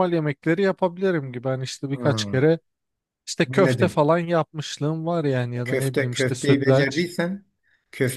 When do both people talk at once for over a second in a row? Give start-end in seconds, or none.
5.7-7.1